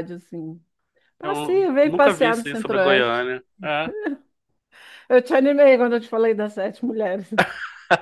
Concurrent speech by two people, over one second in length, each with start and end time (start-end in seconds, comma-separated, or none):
1.2-3.3